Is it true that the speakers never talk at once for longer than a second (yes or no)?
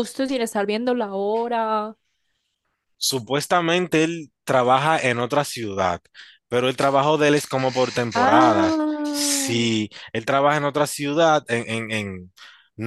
no